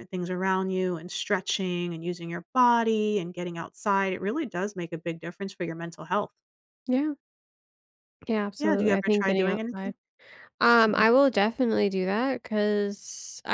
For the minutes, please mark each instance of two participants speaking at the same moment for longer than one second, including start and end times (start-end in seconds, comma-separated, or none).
8.6-9.9